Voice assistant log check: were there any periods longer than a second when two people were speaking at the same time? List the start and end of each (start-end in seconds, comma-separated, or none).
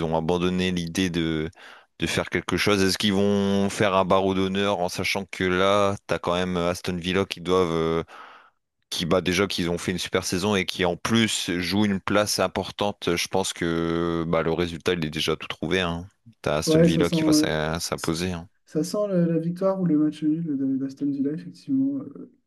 16.6-18.1